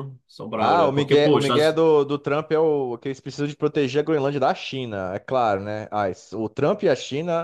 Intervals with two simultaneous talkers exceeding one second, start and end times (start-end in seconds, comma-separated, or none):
0.6-1.8